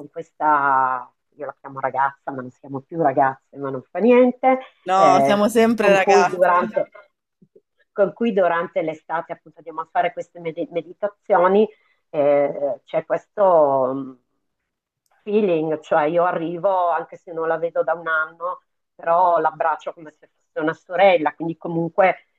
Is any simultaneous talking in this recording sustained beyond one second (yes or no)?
yes